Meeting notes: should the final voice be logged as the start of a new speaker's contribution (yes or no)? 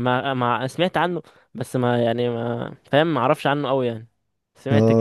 yes